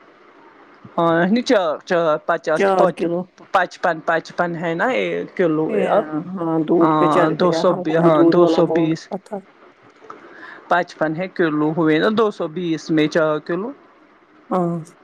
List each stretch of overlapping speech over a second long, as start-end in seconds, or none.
6.8-9.1